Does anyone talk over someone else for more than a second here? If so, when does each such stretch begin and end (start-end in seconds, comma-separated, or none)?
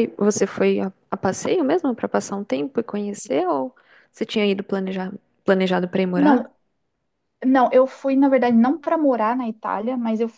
none